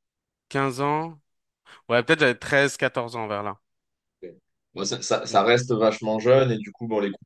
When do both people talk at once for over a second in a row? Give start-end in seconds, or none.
none